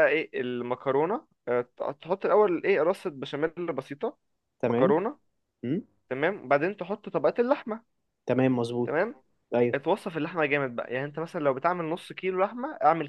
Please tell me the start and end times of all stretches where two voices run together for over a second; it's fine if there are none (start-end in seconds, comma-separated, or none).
none